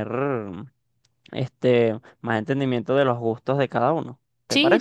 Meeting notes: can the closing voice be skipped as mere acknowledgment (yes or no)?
no